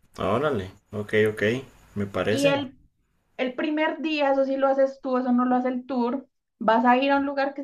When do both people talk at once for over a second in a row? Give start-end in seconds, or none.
none